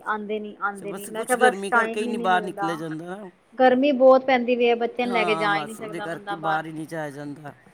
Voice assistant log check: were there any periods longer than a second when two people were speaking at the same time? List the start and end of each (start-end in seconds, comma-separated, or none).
0.8-2.7, 5.1-6.6